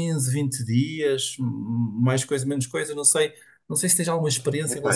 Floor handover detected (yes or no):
yes